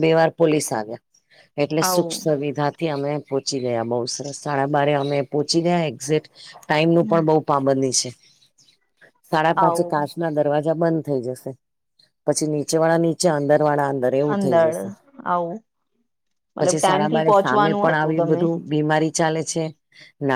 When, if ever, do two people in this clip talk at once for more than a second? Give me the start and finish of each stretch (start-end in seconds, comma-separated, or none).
16.6-18.4